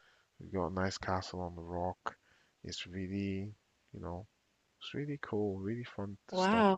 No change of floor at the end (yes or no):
no